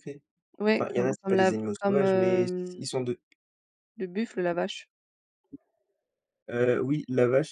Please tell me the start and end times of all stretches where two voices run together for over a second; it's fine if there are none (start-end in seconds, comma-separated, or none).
0.7-2.9